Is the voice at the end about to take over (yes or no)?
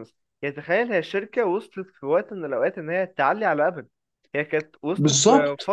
no